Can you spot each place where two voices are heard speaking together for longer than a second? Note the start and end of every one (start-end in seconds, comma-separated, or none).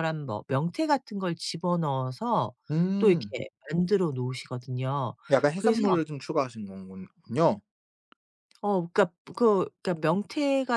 none